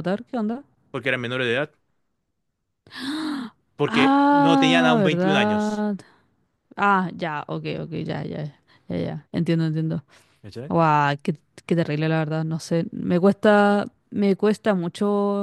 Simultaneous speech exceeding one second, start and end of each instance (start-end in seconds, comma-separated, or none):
3.9-5.9